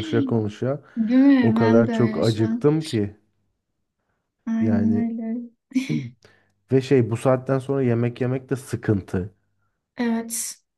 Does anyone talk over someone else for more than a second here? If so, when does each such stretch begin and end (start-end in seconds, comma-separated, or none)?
1.4-2.7